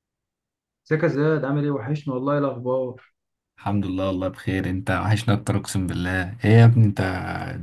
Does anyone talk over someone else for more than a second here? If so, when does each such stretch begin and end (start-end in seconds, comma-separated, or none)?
none